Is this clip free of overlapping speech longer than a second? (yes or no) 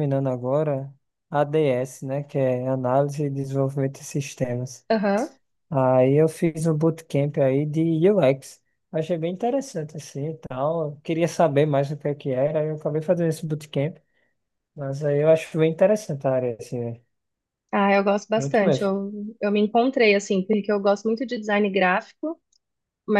yes